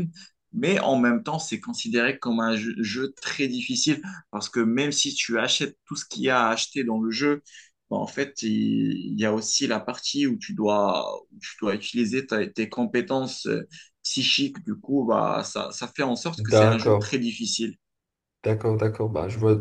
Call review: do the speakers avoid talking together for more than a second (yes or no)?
yes